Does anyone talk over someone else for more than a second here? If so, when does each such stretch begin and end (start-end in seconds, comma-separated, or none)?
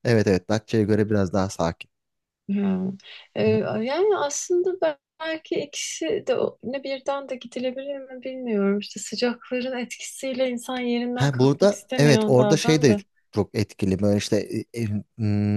11.1-13.0